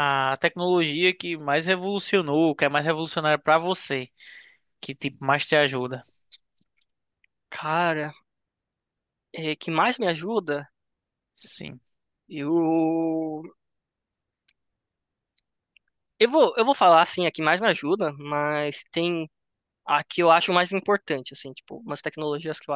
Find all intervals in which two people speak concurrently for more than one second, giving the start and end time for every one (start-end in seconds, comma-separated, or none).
none